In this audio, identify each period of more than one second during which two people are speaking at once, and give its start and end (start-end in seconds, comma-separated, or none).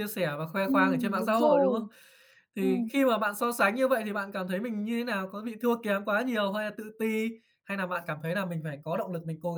0.6-1.9